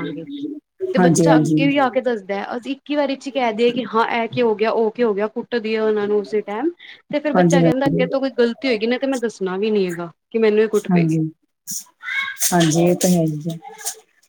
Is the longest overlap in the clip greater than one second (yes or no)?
no